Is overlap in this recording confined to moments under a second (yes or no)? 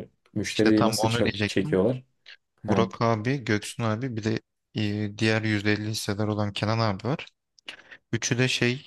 no